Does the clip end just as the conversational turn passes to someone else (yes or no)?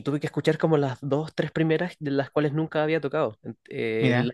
no